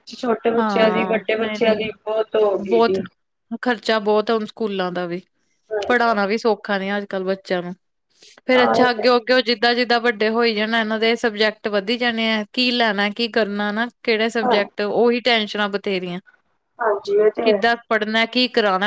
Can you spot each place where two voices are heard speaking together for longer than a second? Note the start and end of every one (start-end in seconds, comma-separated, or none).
none